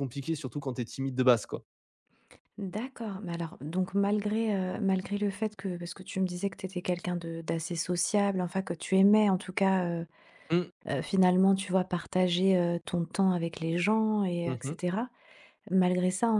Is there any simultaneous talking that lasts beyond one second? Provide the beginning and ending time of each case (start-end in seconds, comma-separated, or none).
none